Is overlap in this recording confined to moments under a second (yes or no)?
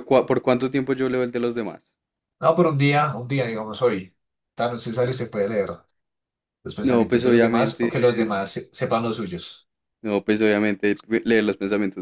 no